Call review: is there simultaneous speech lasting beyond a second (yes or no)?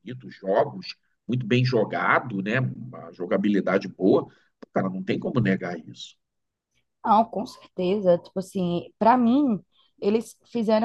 no